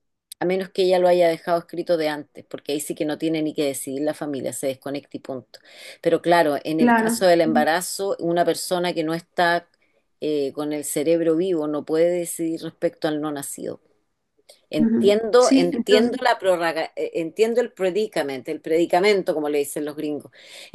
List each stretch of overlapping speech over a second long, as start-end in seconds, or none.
14.8-16.1